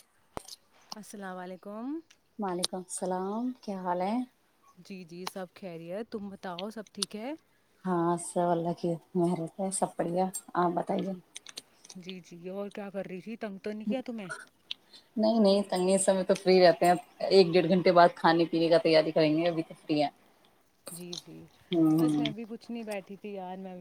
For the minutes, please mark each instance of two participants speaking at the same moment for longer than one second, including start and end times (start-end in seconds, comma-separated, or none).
none